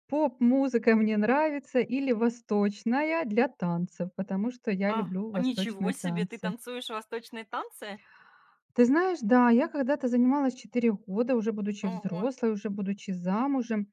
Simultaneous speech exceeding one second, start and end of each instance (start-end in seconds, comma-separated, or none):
4.9-6.5